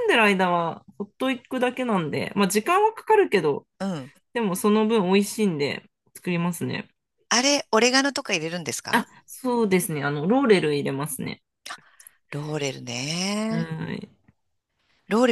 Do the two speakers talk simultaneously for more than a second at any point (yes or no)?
no